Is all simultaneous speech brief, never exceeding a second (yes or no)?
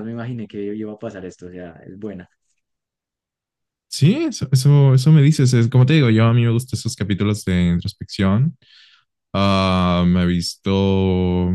yes